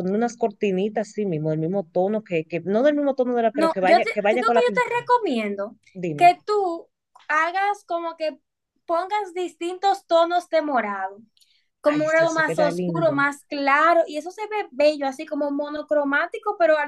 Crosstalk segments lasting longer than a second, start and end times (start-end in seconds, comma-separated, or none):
3.5-5.1, 11.9-13.1